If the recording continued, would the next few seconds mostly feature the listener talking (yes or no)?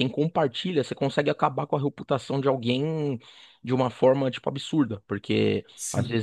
no